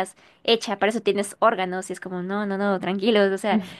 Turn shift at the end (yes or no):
no